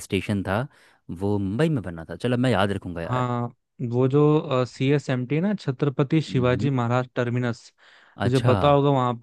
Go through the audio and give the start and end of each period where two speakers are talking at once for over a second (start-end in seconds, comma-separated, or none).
none